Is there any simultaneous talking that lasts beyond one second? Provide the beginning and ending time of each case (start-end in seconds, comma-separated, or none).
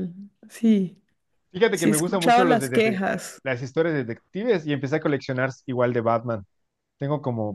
1.7-3.0